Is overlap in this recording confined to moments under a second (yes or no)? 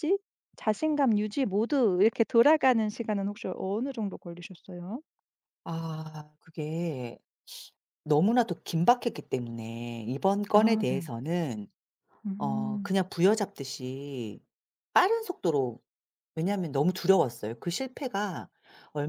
yes